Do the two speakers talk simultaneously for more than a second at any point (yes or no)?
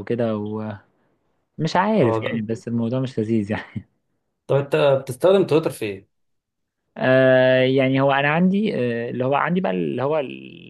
no